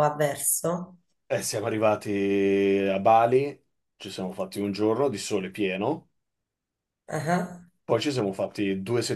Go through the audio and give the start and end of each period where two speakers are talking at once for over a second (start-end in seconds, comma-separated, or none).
none